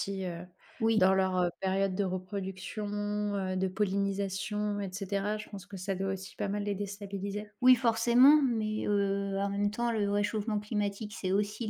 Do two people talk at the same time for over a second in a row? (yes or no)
no